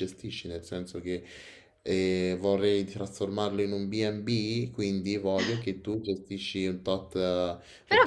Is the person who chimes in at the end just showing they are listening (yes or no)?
no